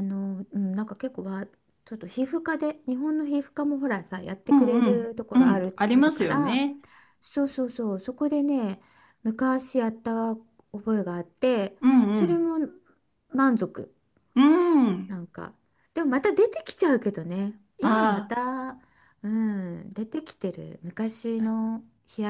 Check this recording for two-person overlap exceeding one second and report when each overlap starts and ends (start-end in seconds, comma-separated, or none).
4.5-6.6